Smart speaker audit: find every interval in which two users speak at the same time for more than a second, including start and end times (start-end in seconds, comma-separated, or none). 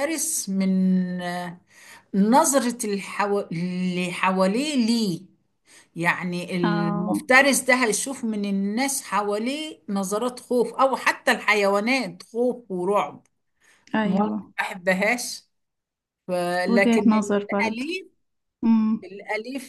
16.7-17.9